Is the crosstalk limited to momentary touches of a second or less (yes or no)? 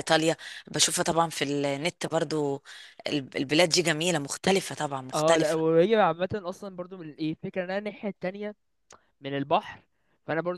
yes